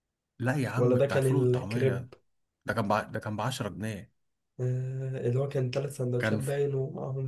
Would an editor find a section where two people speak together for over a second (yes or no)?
yes